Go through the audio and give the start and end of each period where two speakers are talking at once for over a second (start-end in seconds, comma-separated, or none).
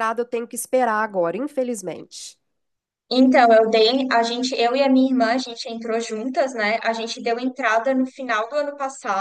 none